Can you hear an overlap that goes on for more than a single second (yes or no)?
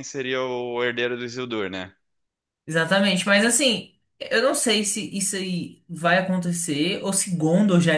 no